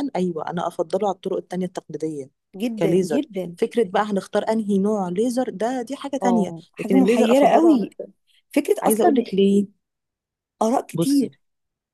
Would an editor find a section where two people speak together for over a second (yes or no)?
yes